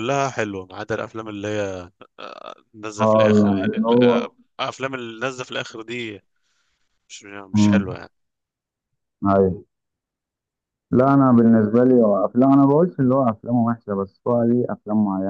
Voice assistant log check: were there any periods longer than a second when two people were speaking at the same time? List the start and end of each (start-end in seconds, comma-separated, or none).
3.0-4.3